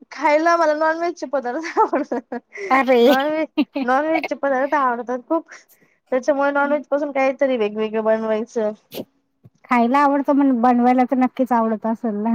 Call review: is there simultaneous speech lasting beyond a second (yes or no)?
no